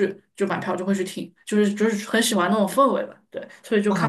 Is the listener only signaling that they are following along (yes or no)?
no